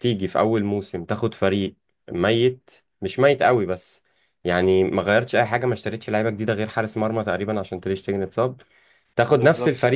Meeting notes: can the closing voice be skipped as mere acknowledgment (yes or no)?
yes